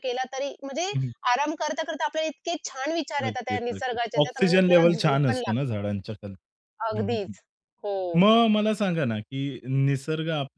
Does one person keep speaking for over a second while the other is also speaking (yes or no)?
yes